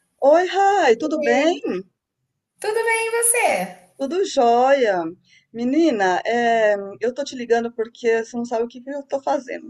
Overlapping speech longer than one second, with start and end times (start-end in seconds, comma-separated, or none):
none